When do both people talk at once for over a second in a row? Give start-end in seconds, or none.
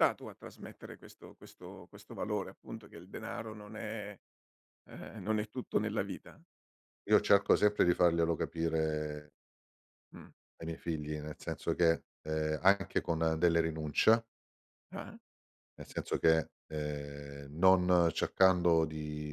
none